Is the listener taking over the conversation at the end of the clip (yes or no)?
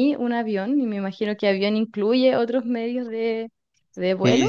yes